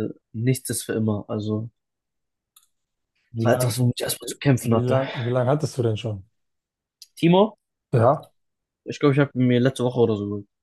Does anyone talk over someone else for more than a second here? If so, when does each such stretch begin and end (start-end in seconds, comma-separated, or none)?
none